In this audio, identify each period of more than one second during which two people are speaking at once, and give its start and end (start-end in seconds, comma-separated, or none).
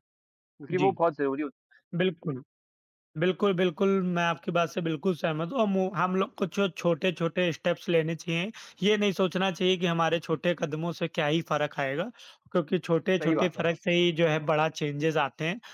none